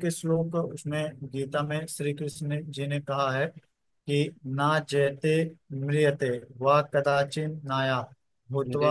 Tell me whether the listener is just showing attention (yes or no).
yes